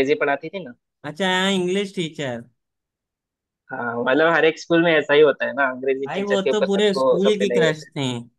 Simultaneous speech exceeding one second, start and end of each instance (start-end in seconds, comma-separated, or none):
6.1-7.9